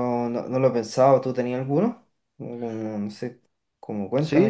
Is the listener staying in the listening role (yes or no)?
no